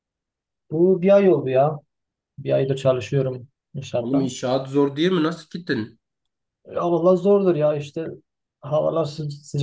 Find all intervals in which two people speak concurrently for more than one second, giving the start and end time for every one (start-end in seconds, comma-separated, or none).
none